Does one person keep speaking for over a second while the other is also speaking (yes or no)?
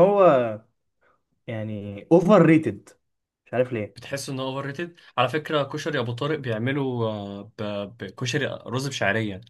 no